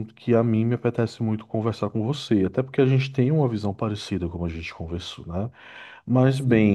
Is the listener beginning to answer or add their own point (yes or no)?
no